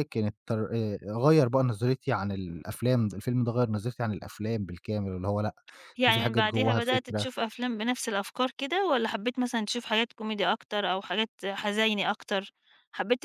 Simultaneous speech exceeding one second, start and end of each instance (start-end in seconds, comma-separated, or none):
6.1-7.3